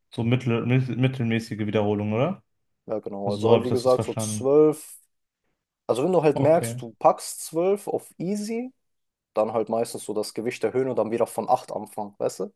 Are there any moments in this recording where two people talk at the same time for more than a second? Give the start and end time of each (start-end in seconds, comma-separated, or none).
3.2-4.5